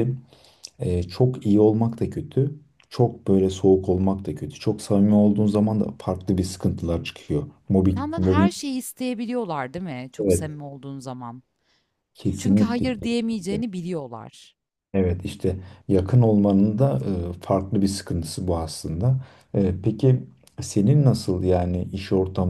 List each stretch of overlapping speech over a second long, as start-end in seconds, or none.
12.4-13.6